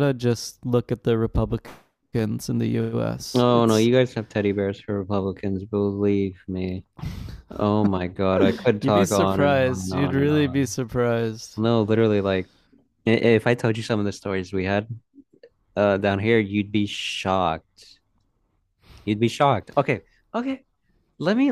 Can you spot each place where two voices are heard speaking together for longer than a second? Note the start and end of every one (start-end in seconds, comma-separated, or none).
8.8-10.7